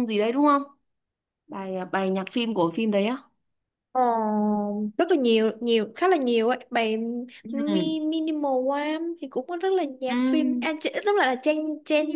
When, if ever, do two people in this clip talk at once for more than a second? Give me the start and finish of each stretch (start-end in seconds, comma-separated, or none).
none